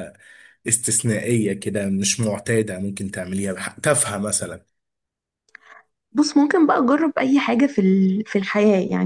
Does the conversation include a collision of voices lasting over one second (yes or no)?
no